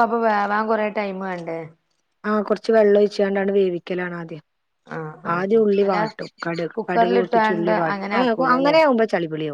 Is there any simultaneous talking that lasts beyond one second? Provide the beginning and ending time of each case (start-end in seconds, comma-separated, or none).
6.8-8.8